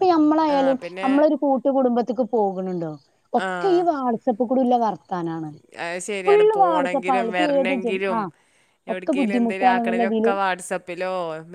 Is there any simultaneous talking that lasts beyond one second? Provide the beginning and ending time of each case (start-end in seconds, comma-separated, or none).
6.2-8.2, 8.9-10.3